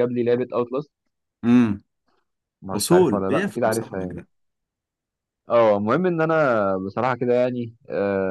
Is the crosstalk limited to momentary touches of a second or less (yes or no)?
no